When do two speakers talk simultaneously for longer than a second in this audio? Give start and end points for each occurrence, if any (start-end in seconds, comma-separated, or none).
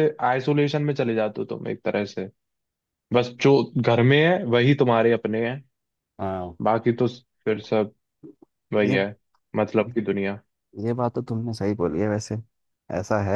none